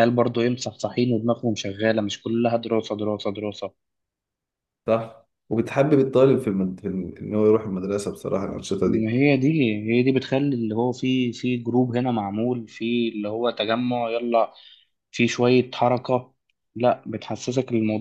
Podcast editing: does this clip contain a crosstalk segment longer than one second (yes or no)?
no